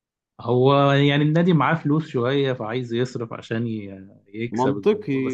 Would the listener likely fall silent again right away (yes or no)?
no